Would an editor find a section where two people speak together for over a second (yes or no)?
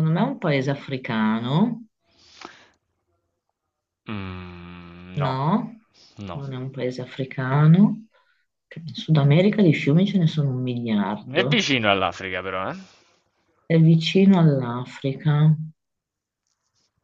no